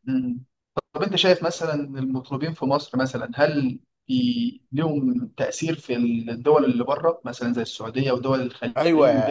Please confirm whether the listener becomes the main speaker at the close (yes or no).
yes